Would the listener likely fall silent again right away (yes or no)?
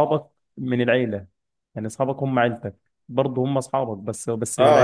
no